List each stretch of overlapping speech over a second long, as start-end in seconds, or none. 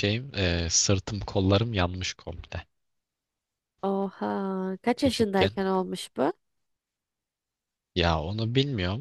none